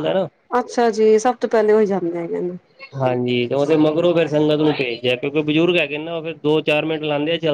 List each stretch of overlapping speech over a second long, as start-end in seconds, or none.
none